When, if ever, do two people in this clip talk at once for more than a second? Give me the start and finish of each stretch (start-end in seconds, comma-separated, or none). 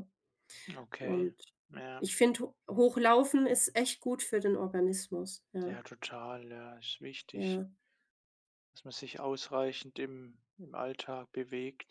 none